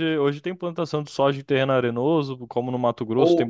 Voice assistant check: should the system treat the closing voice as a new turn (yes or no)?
yes